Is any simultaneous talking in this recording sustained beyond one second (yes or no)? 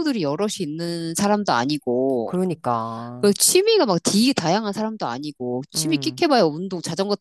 no